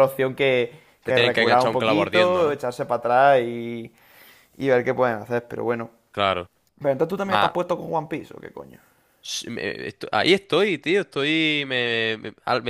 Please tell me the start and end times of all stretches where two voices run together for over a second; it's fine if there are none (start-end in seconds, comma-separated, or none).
1.0-2.6